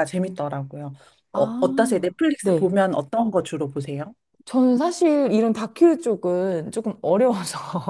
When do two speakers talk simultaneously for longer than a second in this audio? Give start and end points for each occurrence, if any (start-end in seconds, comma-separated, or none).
1.3-2.7